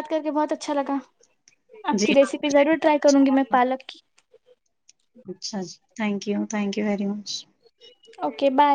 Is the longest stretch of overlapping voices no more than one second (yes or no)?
no